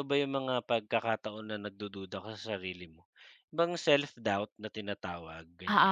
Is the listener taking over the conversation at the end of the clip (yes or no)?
yes